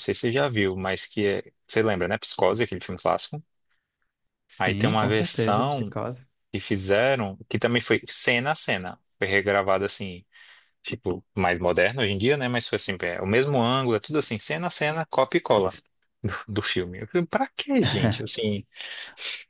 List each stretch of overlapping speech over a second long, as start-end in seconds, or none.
4.6-5.9